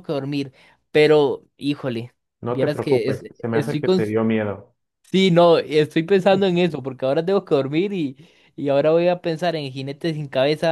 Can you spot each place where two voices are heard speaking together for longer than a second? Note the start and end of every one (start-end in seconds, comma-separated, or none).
2.4-4.0